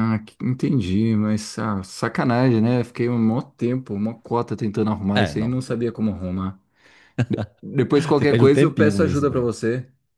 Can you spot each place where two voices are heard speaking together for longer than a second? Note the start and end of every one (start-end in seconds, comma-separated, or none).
8.2-9.5